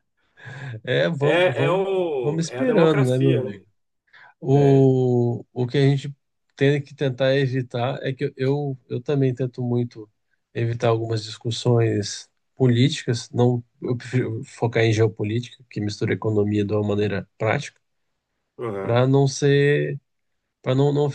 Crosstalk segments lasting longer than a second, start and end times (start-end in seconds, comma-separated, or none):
1.2-3.5